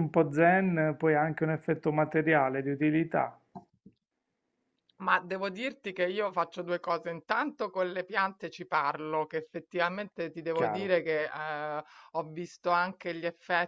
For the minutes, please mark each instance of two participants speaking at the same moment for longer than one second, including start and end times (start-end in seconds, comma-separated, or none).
none